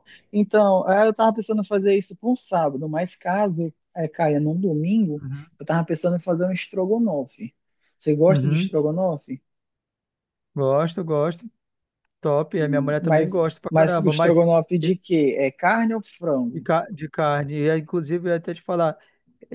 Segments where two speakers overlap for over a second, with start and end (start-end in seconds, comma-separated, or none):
12.6-14.4